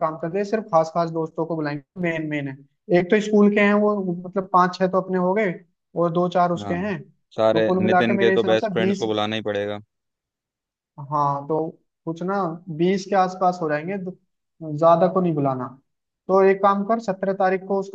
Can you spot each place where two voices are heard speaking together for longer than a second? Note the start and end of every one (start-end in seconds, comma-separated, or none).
7.5-9.0